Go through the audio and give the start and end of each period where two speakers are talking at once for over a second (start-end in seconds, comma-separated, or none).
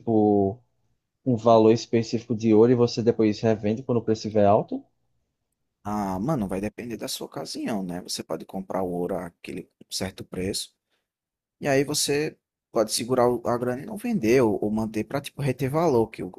none